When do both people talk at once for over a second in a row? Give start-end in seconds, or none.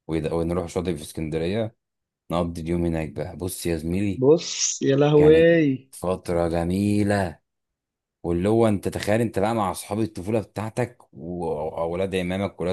none